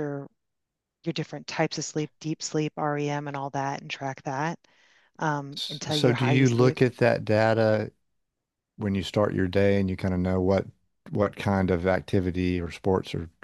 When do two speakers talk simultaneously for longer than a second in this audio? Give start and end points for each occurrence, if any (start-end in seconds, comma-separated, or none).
5.5-6.8